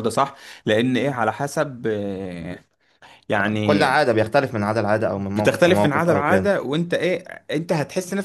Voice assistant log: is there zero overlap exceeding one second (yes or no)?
no